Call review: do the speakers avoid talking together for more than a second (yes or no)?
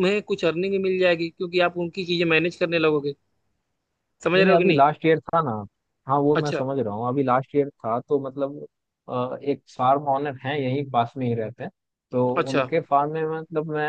yes